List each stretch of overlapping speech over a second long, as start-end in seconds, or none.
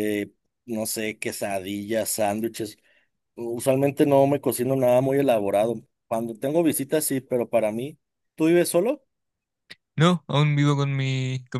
none